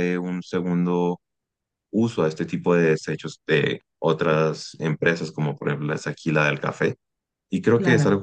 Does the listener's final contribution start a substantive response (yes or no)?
no